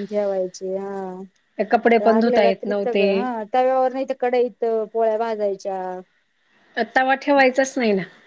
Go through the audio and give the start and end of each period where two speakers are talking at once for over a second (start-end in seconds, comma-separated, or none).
1.7-3.2